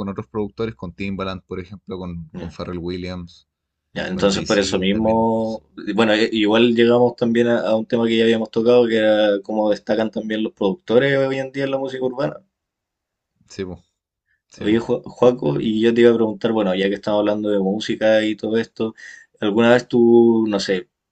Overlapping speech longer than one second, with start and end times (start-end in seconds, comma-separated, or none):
4.1-5.6